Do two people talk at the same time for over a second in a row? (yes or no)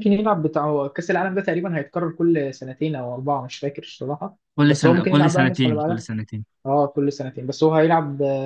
yes